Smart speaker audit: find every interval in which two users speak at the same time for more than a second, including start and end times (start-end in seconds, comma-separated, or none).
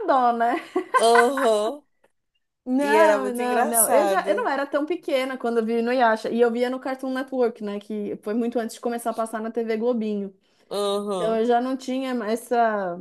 2.8-4.5